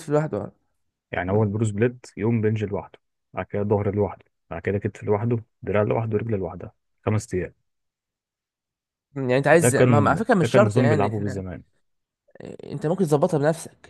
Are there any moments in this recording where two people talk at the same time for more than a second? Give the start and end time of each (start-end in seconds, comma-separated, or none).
9.5-11.4